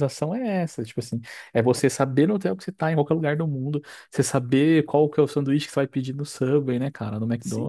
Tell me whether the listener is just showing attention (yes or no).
no